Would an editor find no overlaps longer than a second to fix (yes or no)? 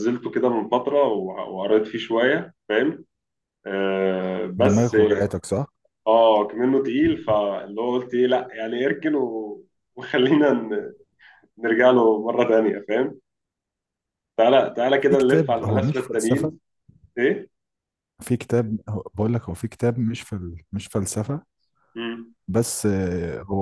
no